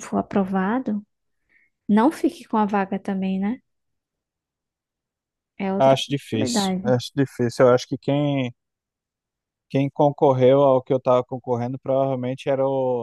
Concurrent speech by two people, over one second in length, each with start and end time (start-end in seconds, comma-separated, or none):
5.8-7.0